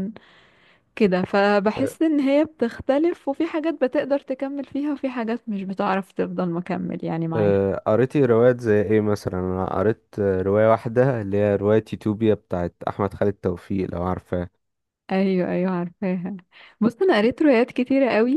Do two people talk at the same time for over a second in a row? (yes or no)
no